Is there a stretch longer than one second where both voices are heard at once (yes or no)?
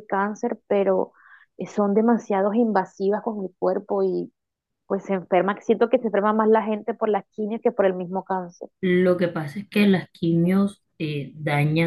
no